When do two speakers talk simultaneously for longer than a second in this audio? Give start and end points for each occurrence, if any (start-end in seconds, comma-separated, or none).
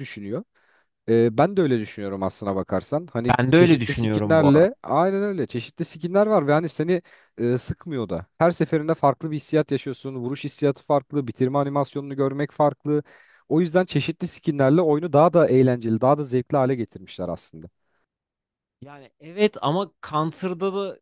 3.3-4.7